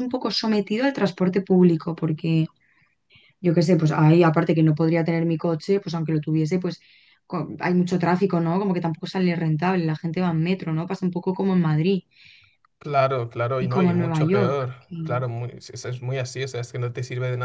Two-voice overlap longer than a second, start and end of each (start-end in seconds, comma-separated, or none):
13.6-15.3